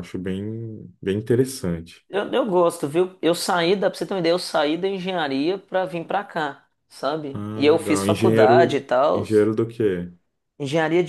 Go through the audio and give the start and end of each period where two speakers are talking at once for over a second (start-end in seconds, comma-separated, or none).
7.3-9.2